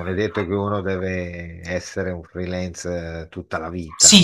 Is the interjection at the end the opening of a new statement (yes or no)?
yes